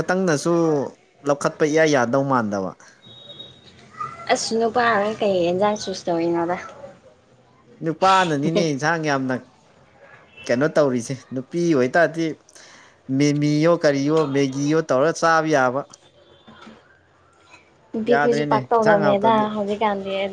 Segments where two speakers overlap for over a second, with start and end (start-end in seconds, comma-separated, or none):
18.1-19.4